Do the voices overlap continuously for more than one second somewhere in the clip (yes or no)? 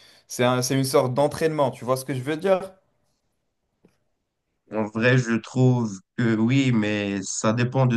no